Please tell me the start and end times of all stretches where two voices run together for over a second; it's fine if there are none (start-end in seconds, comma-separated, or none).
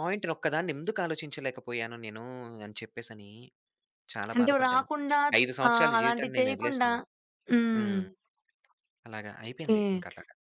5.7-6.9